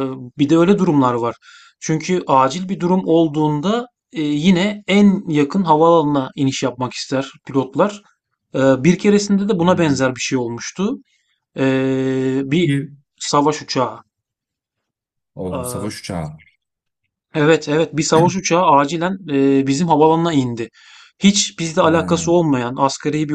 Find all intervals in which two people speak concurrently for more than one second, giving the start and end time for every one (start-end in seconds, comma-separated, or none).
none